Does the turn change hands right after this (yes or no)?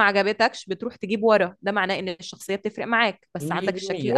yes